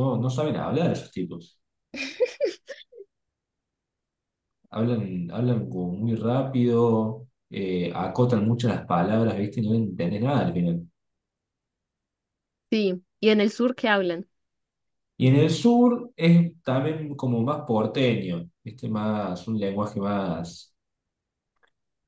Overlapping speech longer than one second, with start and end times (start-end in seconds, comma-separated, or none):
none